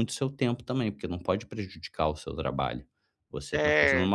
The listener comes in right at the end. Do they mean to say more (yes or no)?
no